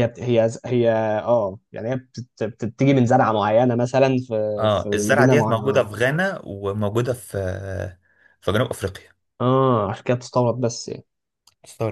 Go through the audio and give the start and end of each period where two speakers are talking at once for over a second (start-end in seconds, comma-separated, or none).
4.6-5.9